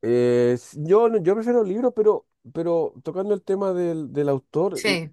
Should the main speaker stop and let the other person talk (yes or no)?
no